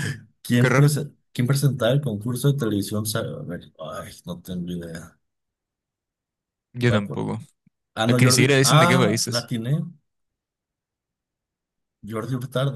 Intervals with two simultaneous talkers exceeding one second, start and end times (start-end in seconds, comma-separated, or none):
8.1-9.5